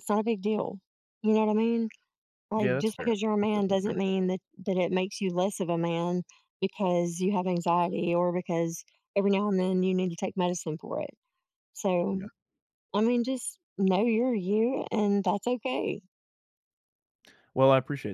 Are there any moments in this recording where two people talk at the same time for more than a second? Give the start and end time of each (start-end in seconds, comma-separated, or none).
2.5-4.0